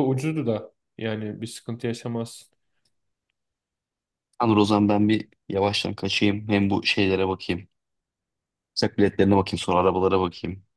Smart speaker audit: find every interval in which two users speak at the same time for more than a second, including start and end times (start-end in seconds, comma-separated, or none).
none